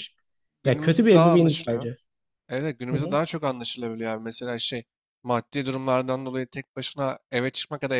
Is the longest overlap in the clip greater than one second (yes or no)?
yes